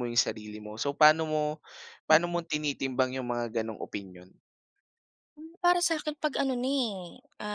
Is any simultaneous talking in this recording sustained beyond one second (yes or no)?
no